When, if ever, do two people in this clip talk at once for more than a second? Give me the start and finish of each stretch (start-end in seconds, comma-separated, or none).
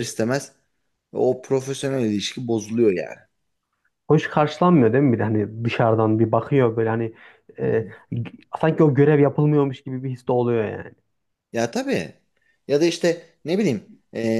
none